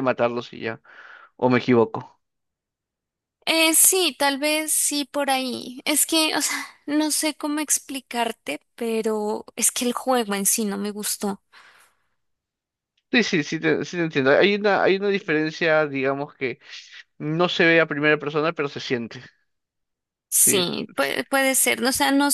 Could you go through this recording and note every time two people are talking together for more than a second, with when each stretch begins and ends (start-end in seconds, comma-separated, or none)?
none